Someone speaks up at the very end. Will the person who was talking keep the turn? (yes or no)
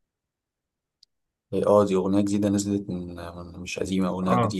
no